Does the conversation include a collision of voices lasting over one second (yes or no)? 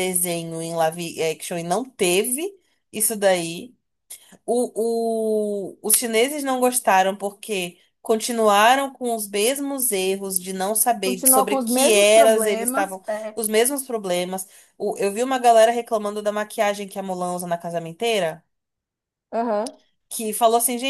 yes